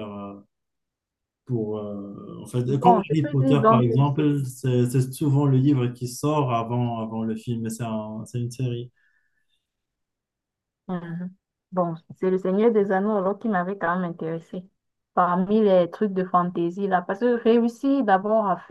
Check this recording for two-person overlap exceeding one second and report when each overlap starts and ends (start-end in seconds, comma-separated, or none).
2.6-4.3